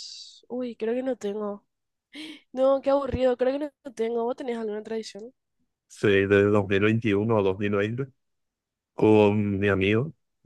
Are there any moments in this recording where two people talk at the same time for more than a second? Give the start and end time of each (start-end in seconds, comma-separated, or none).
none